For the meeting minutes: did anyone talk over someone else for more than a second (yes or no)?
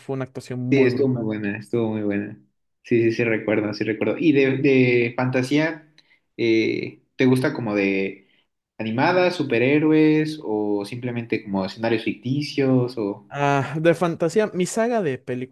no